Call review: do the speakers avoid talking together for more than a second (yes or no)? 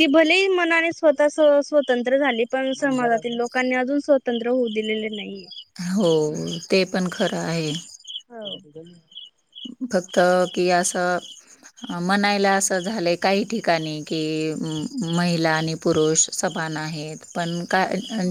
yes